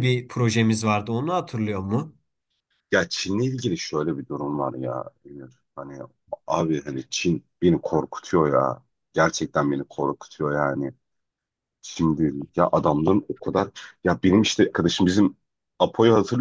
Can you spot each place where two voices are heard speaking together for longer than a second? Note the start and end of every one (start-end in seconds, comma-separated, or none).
none